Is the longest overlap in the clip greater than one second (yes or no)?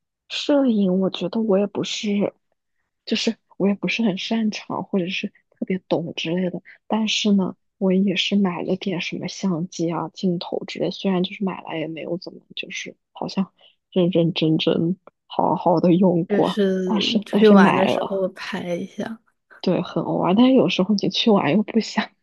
yes